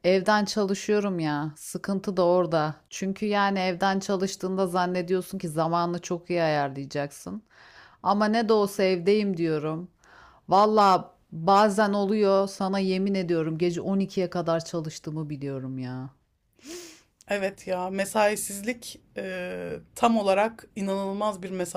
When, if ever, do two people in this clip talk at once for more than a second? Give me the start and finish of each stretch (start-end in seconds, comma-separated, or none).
none